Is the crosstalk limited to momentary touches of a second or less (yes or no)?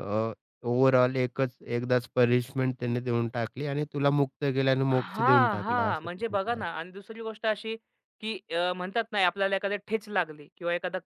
no